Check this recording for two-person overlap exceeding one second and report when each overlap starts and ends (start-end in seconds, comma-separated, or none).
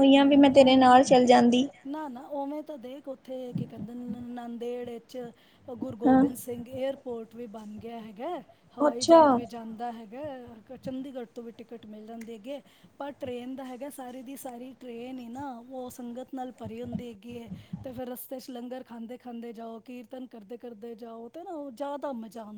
none